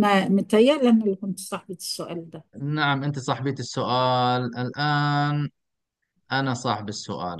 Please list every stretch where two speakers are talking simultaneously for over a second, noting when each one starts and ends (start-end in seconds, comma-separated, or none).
none